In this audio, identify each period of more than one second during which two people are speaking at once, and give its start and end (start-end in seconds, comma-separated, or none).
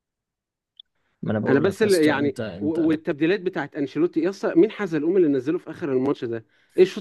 1.5-2.9